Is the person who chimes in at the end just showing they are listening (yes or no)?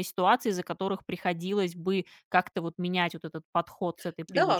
no